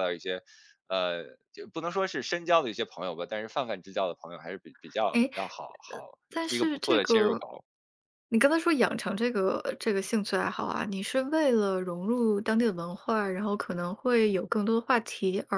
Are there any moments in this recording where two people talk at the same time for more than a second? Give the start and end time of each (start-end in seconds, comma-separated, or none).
5.9-7.5